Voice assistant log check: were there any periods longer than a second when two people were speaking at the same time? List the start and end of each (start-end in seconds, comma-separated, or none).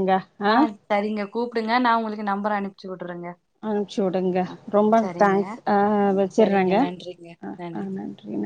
none